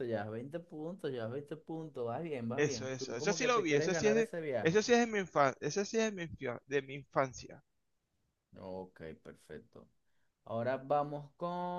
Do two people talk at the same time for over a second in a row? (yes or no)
yes